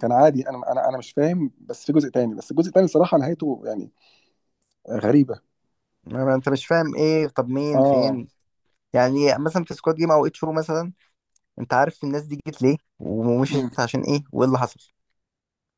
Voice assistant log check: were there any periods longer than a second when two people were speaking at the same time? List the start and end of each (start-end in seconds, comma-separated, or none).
none